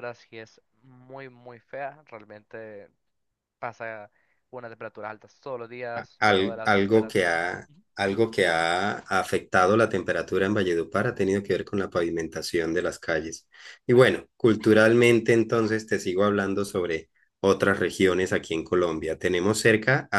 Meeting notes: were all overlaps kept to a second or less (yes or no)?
no